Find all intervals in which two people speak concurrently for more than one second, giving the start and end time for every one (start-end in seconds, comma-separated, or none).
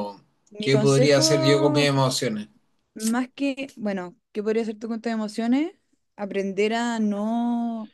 0.6-1.9